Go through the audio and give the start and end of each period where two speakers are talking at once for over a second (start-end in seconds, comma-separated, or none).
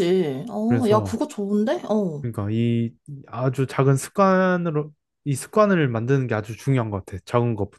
none